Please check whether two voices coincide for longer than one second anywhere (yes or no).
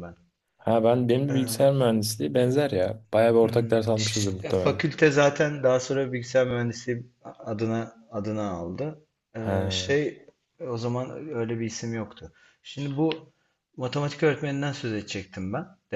yes